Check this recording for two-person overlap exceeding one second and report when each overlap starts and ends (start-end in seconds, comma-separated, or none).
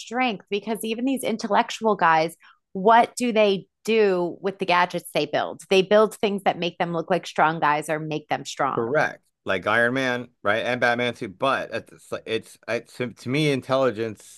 none